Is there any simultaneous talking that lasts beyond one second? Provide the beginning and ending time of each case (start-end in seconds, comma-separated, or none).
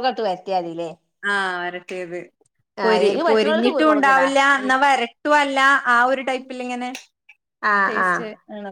2.9-4.7